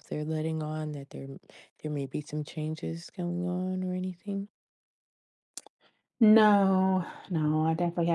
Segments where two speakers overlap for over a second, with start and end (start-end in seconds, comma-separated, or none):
none